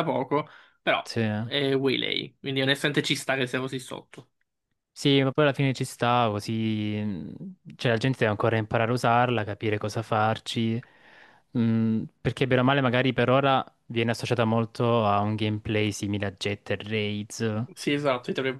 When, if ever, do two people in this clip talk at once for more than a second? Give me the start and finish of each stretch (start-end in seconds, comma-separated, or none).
none